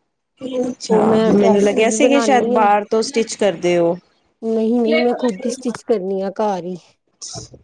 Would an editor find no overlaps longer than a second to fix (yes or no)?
no